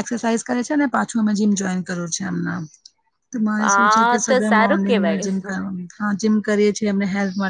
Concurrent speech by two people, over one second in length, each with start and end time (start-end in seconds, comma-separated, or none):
3.6-5.2